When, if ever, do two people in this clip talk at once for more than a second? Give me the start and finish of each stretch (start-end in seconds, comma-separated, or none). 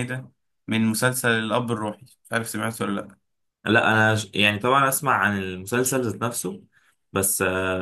none